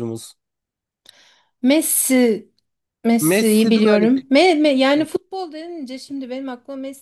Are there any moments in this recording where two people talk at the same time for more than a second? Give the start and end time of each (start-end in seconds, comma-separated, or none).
3.2-4.5